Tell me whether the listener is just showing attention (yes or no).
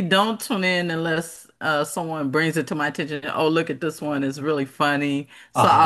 yes